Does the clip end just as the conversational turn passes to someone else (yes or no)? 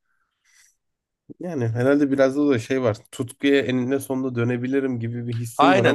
yes